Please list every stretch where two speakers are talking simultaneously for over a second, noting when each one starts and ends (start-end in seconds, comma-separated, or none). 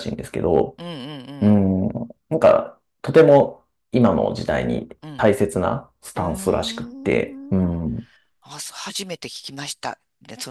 6.2-7.7